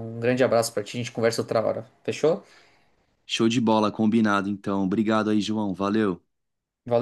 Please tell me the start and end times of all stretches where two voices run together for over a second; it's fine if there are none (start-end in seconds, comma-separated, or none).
none